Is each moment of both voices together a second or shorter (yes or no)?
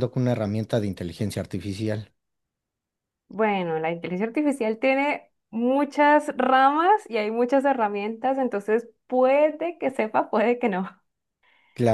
yes